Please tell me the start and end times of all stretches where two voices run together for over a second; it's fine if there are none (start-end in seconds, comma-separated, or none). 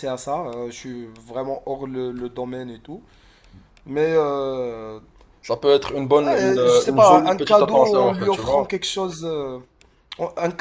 6.3-8.7